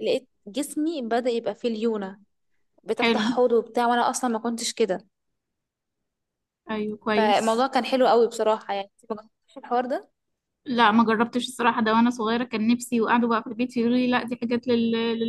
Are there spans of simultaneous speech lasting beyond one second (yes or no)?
no